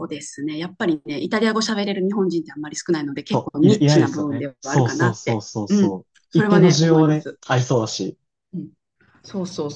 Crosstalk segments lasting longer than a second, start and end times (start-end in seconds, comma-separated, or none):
3.3-7.4